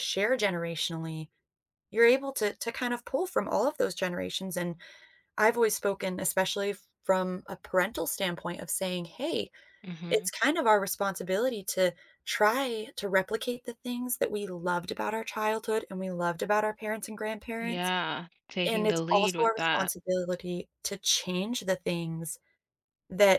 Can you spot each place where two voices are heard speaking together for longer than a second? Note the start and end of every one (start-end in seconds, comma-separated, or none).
18.7-19.9